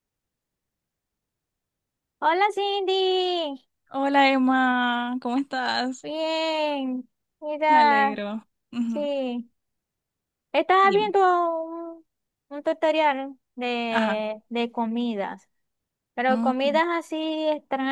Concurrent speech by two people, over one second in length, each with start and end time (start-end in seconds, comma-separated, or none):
none